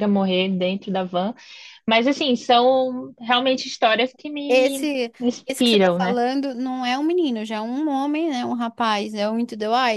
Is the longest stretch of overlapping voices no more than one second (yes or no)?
no